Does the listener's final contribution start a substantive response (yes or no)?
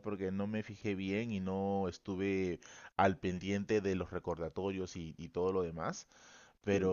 no